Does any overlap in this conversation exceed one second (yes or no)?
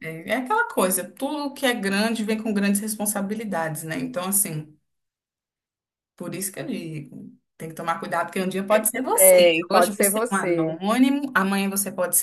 yes